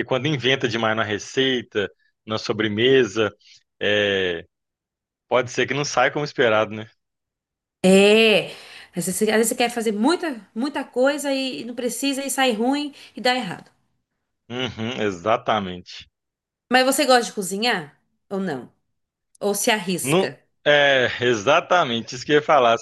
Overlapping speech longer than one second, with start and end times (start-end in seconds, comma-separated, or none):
none